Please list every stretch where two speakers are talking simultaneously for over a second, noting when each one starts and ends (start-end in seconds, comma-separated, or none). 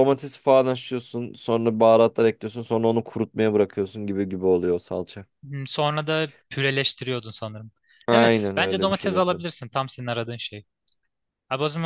8.1-9.4